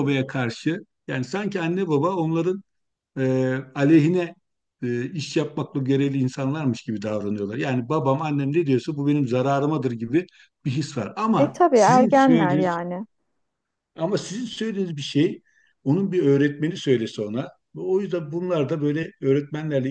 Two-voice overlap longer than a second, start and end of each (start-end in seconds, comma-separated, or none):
11.3-12.8